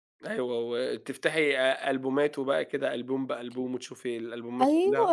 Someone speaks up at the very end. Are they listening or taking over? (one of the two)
taking over